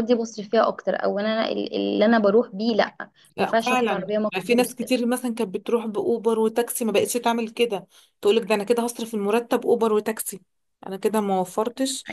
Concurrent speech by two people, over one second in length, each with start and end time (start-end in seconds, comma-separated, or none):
3.4-4.8